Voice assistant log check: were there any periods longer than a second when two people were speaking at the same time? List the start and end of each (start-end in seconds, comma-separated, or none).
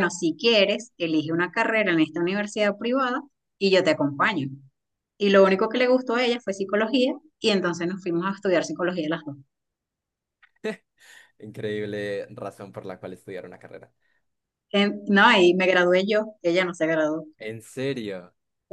none